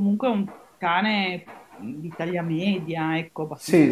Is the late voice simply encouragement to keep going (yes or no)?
yes